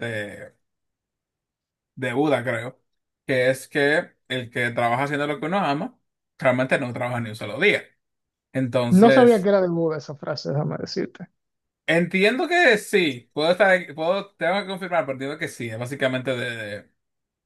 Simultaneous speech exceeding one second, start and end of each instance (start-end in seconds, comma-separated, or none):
none